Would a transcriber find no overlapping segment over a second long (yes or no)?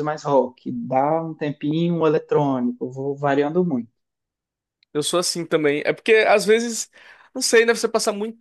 yes